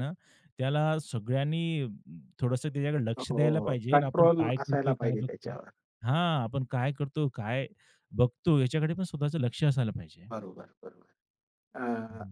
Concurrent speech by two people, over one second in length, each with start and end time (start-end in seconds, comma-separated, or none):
3.2-5.6